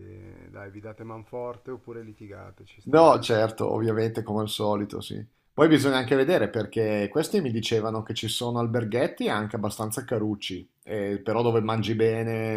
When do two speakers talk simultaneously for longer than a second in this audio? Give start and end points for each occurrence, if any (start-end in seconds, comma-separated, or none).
none